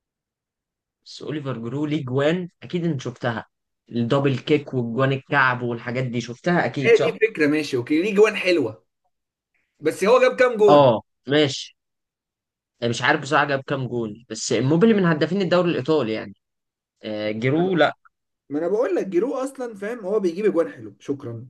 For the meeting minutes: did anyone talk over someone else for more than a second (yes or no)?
no